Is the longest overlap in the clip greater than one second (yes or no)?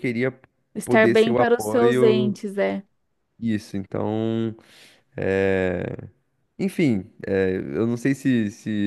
yes